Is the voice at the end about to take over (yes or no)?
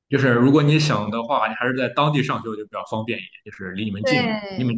yes